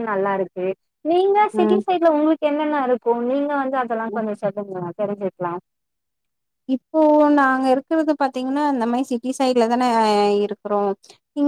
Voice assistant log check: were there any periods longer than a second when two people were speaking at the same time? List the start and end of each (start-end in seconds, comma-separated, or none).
none